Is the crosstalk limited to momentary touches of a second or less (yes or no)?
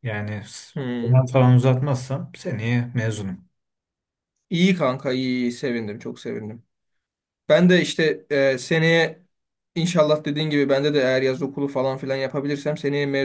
yes